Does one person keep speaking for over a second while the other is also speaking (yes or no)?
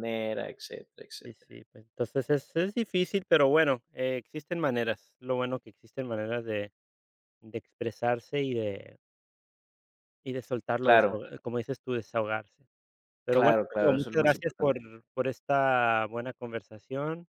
yes